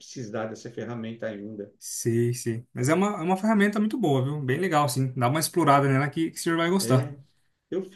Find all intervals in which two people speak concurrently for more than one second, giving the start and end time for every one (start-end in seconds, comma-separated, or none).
none